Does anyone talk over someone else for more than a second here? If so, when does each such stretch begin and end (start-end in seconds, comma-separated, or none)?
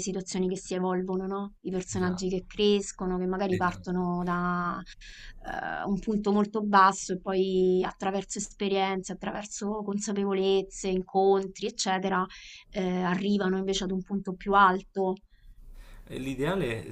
none